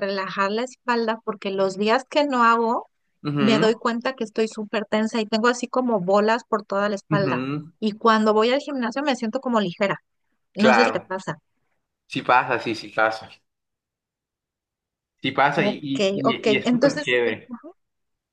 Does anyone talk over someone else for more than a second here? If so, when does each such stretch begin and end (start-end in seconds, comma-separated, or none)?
15.5-17.1